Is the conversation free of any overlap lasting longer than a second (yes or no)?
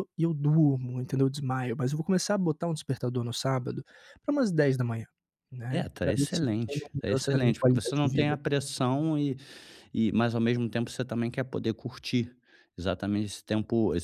no